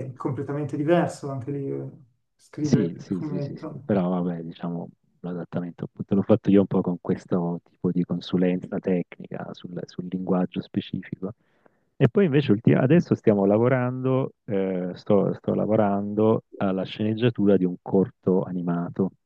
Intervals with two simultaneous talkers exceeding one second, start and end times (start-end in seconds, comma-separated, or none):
2.6-3.9